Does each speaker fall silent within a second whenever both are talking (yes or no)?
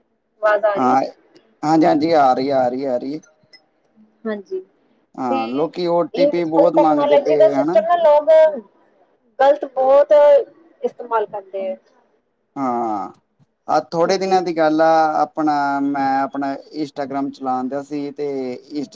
no